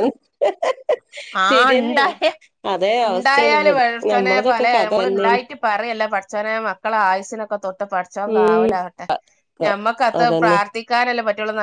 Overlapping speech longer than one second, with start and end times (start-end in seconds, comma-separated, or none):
3.1-5.4